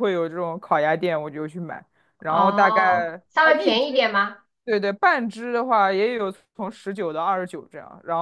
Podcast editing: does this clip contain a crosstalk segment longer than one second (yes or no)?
yes